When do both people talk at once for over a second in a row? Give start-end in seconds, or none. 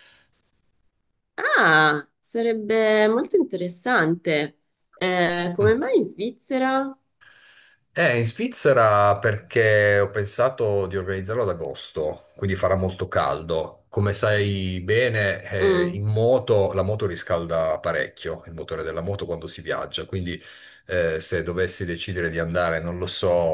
none